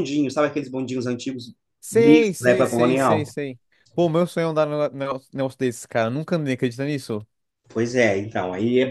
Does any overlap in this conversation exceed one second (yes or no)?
yes